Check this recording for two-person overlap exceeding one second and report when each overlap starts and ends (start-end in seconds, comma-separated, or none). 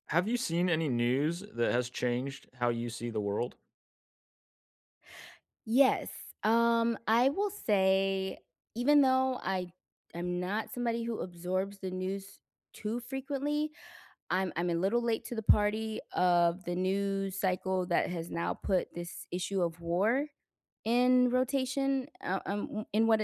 none